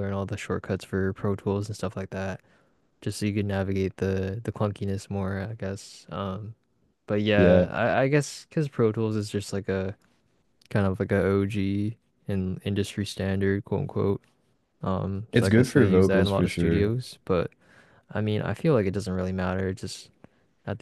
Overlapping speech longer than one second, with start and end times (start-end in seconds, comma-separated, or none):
15.3-16.9